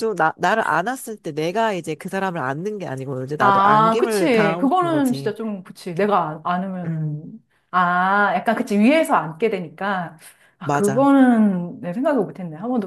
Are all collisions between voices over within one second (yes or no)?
no